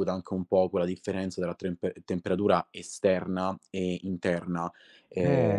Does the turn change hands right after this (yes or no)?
yes